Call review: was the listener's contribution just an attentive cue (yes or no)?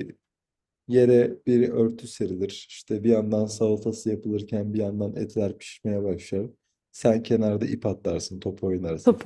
no